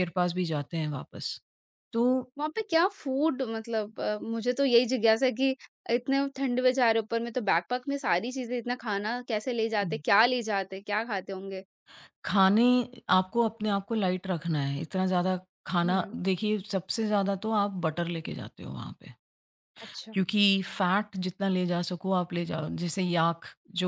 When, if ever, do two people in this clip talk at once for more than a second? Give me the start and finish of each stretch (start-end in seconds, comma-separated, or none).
none